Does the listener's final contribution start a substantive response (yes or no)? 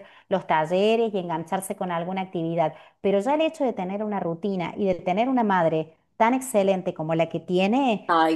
no